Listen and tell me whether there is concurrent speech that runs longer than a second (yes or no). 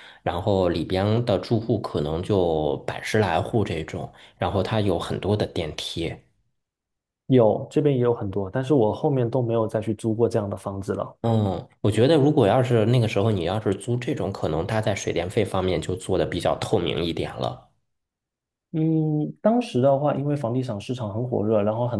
no